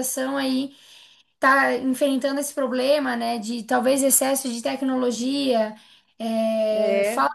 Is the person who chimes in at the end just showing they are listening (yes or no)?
yes